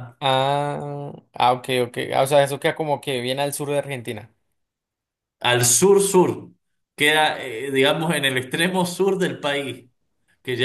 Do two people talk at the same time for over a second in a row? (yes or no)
no